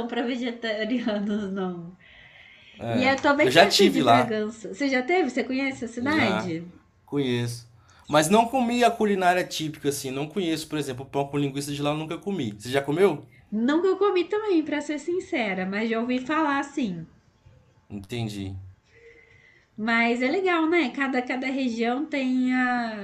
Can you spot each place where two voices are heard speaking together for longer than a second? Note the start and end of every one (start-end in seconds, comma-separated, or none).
2.9-4.4